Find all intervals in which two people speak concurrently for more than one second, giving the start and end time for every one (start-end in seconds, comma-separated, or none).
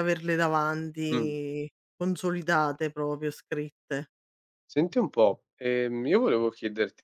none